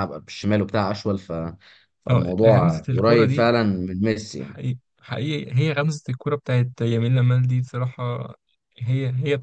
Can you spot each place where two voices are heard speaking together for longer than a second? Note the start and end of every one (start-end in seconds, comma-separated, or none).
2.1-3.5